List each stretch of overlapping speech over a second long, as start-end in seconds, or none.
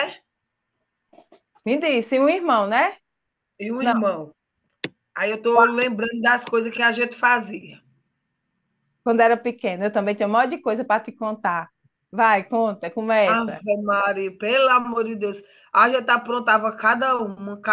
none